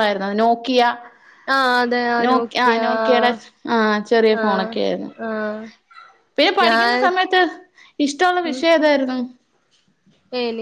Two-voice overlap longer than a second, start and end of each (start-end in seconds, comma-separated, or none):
none